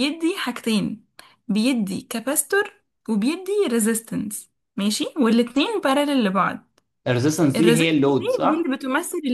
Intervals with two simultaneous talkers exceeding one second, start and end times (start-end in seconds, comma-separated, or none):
7.5-8.7